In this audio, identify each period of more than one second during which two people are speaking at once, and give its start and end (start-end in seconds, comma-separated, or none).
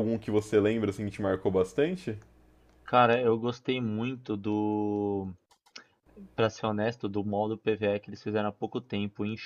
none